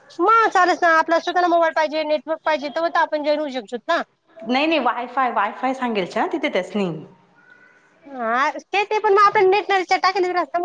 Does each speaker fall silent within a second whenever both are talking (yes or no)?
yes